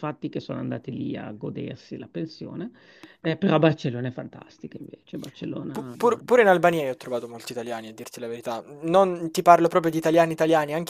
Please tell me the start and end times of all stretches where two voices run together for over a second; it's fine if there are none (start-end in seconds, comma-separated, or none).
none